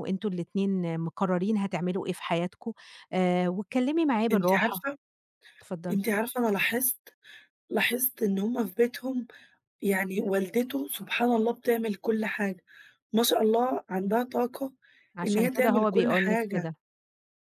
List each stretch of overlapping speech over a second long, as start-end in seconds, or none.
15.2-16.7